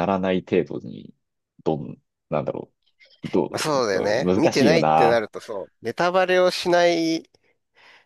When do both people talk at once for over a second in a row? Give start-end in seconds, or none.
3.5-5.3